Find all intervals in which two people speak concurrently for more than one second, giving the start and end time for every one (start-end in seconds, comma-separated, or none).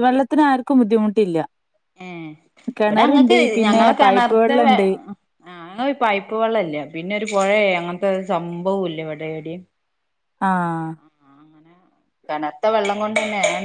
2.9-4.8